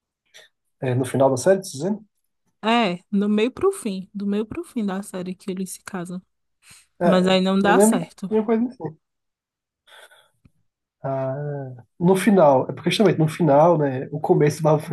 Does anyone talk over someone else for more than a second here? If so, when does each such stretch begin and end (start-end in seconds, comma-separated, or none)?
7.0-8.3